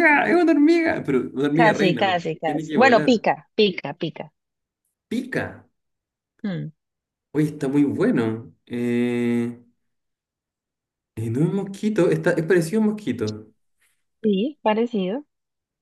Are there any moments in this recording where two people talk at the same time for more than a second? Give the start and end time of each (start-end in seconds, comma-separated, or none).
1.5-3.2